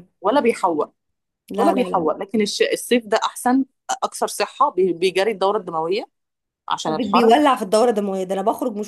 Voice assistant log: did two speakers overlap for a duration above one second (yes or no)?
no